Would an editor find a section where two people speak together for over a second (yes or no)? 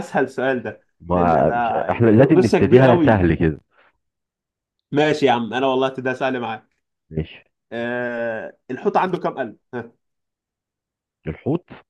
yes